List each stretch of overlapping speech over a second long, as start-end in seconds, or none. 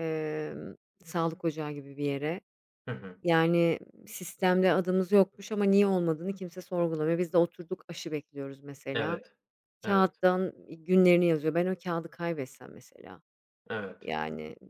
none